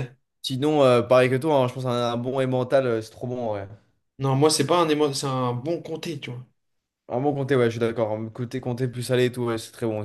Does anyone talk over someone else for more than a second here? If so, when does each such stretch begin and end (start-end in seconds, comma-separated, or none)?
none